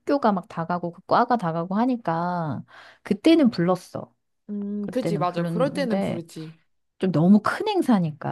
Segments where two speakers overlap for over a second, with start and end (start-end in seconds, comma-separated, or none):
4.8-6.2